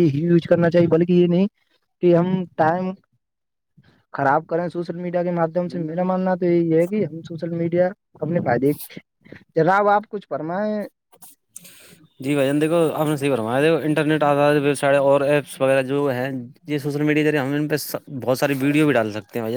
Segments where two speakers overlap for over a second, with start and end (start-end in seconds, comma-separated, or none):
none